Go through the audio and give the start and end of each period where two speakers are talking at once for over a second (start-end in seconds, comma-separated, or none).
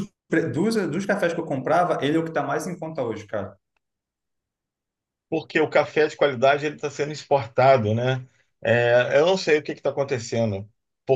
none